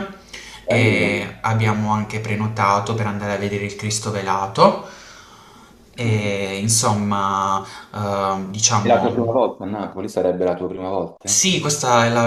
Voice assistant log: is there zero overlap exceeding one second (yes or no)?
yes